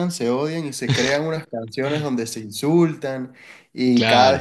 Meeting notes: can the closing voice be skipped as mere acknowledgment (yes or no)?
yes